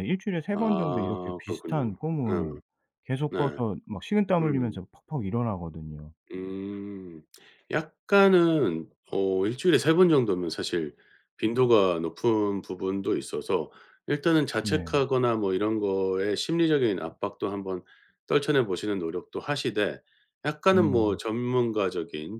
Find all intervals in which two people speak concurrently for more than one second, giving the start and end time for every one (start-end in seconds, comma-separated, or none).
0.5-2.6